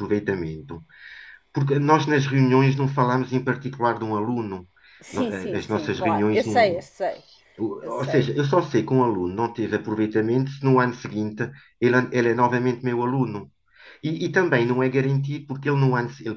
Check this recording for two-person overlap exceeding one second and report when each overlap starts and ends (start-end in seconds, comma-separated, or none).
5.1-6.8